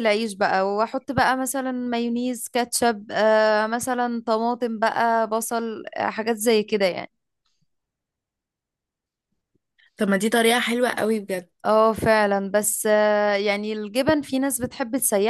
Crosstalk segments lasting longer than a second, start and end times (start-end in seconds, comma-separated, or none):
none